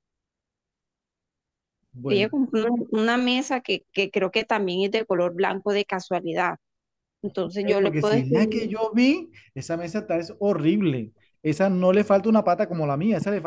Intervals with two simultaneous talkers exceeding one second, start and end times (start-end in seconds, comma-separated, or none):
7.4-8.7